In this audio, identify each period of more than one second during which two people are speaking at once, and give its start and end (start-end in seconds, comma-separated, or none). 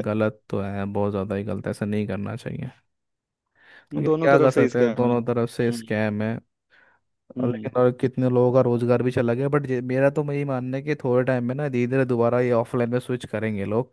4.0-6.0